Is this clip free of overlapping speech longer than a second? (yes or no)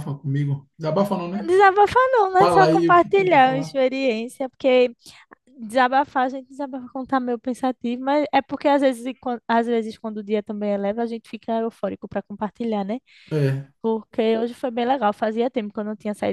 no